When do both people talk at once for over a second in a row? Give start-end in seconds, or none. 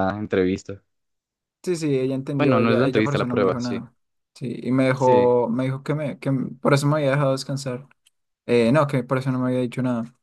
2.4-3.8